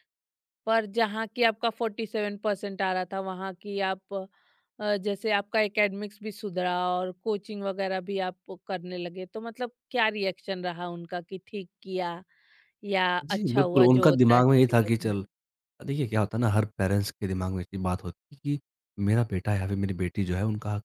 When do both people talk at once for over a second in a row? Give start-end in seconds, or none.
13.2-15.1